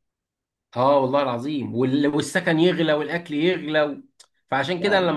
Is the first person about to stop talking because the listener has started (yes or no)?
no